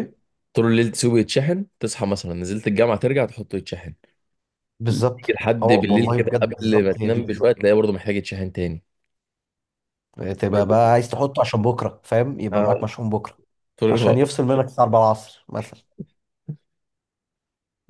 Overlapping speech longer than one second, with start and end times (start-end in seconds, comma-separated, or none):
4.9-7.5